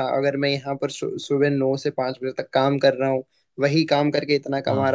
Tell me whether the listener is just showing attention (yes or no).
yes